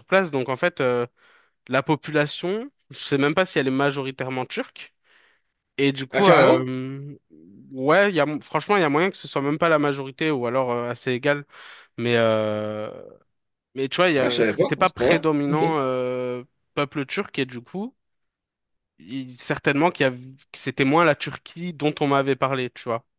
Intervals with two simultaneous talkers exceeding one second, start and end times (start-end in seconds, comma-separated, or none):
14.2-15.6